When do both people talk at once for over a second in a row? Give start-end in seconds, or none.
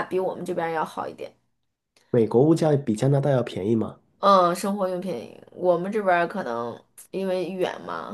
none